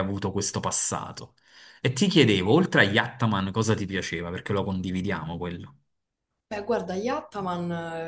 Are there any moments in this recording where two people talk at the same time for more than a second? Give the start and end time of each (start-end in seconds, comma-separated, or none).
none